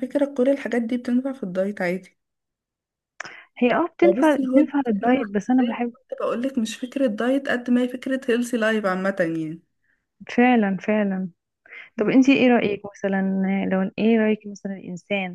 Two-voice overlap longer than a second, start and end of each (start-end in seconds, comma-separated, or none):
4.0-5.9